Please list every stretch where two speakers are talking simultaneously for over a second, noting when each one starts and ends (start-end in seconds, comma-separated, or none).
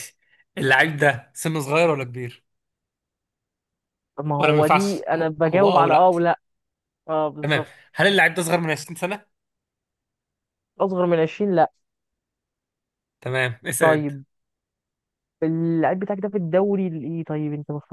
4.4-6.1